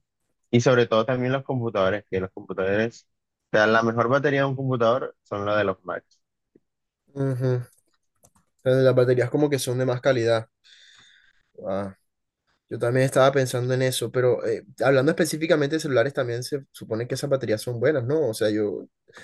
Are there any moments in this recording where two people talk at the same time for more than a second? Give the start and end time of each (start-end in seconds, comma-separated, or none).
none